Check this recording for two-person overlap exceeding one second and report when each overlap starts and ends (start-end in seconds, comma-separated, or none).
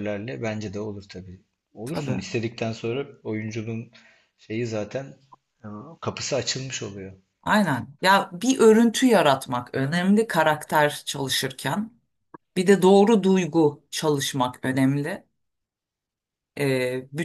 none